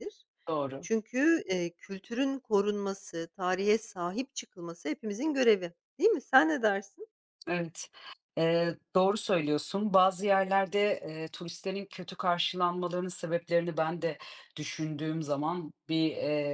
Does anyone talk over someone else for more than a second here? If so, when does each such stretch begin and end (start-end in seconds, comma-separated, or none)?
none